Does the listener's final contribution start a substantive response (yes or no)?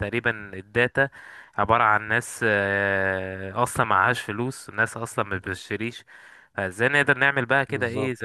no